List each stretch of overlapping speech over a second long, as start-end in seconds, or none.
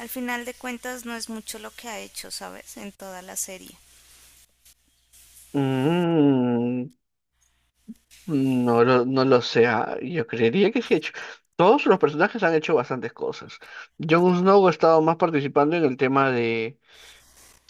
none